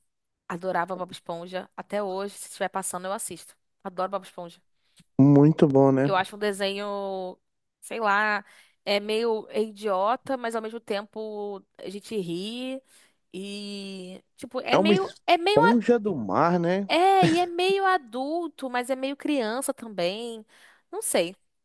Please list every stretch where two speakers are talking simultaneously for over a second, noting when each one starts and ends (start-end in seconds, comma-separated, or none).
14.7-15.9